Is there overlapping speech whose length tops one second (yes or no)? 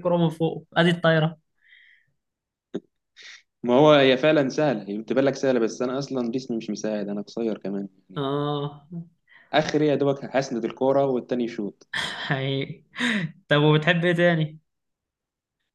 no